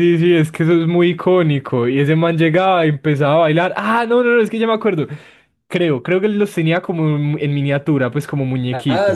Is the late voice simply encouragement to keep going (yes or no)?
no